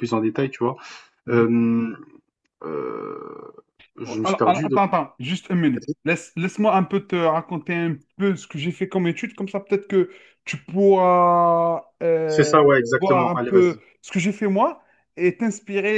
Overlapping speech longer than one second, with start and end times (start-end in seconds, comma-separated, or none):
12.3-13.8